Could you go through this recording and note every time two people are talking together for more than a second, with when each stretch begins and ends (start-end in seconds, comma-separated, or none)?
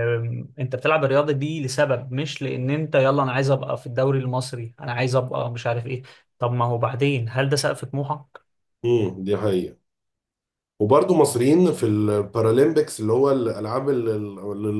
none